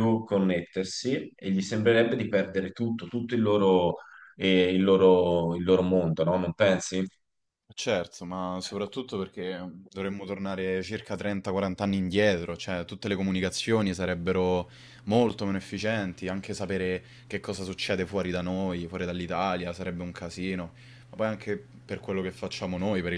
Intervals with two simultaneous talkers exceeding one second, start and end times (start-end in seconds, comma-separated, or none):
none